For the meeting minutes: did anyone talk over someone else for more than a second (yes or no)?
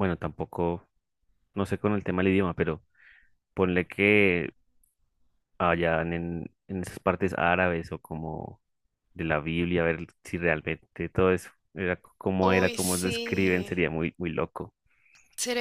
yes